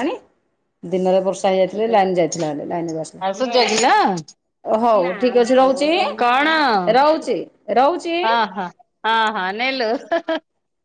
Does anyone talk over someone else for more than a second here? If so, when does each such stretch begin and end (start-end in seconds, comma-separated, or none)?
none